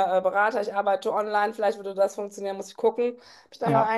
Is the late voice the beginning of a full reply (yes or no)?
no